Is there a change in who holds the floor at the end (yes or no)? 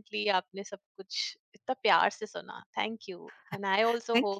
no